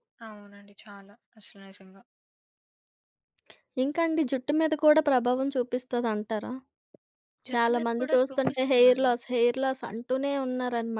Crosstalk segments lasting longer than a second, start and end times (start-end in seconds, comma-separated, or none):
7.5-9.2